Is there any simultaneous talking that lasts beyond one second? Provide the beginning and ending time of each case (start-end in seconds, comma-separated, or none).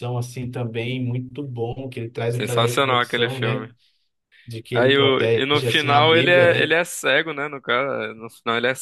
2.3-3.7, 4.7-6.7